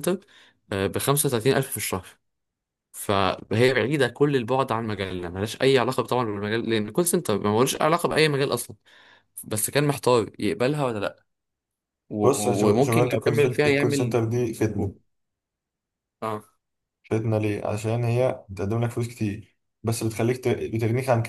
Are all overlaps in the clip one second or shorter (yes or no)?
no